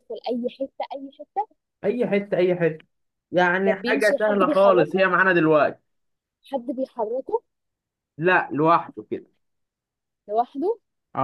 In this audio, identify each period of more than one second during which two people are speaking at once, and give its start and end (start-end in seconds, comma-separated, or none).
3.7-5.1